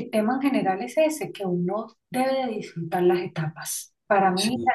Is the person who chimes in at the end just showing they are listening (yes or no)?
yes